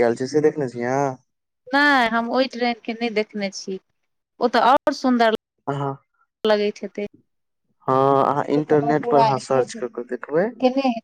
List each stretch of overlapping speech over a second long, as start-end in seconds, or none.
none